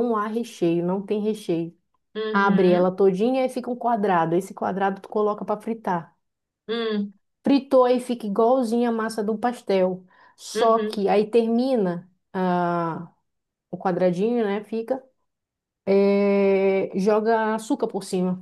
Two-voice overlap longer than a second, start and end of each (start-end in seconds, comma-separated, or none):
none